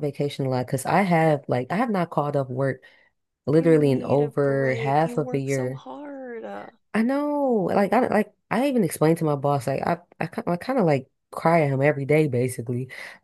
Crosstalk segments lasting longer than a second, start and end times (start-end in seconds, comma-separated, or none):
3.6-5.8